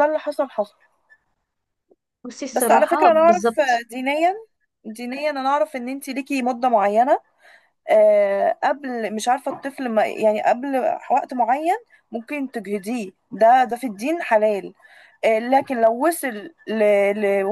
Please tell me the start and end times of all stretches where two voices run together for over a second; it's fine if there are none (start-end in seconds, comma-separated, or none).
2.5-3.8